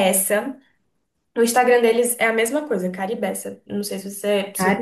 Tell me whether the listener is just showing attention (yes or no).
yes